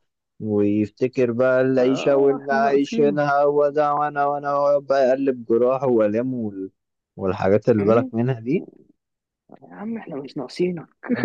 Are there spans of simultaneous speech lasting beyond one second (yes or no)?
yes